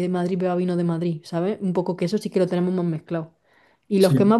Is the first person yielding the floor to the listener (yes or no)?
no